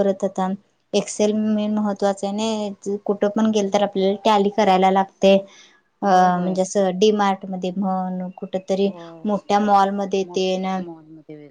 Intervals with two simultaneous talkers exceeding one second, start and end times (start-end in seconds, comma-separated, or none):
none